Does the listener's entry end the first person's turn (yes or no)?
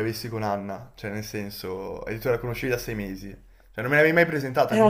no